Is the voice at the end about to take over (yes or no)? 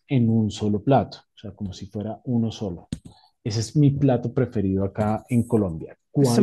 yes